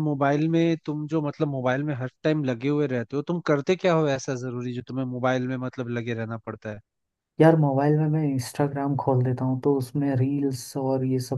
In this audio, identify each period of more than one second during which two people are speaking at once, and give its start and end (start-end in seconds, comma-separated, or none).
none